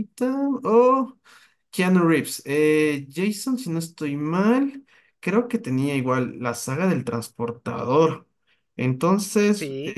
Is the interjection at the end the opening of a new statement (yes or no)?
no